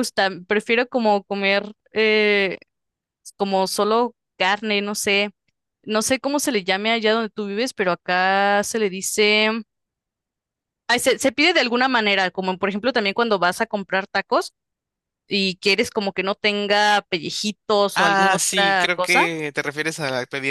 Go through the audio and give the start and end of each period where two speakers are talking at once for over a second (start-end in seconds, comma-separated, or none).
17.9-19.3